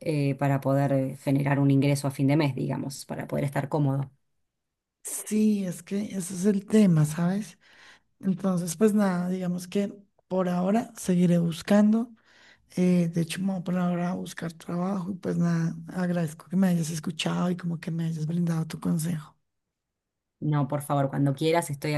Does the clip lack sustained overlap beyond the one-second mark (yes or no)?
yes